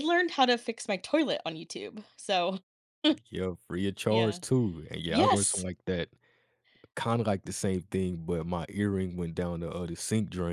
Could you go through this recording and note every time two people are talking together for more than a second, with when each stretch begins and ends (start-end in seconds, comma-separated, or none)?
none